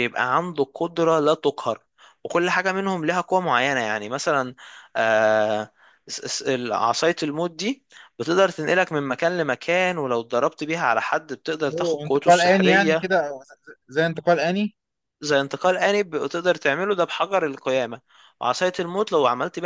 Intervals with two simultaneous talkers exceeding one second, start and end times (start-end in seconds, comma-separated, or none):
11.7-13.1